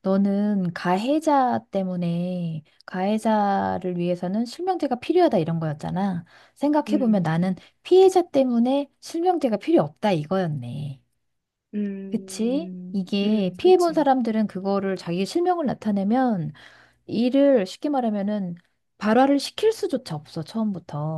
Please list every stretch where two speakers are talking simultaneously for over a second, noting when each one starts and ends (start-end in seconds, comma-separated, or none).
12.1-14.1